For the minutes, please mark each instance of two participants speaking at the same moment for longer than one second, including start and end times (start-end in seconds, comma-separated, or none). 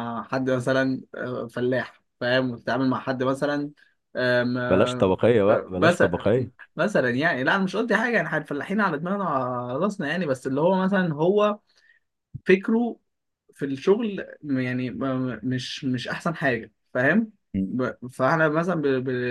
4.7-6.2